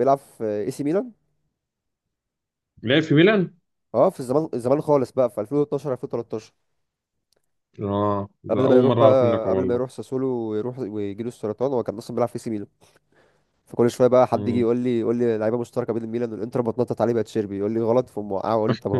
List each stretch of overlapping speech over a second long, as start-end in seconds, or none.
8.5-9.9